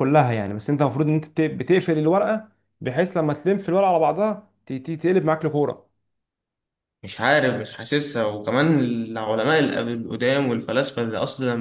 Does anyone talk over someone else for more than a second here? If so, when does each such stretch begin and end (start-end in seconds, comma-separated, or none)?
none